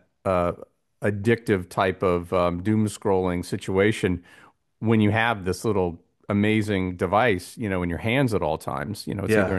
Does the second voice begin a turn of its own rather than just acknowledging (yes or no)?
no